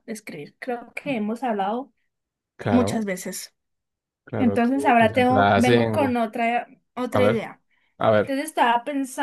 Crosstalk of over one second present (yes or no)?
yes